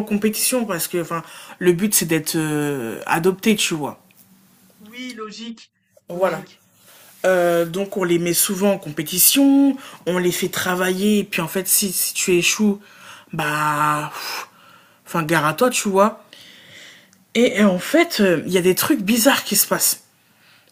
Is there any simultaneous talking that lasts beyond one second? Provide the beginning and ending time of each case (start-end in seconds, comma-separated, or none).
none